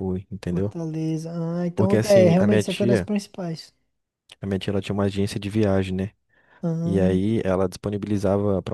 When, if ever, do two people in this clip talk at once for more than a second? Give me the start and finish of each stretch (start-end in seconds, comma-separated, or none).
1.8-3.1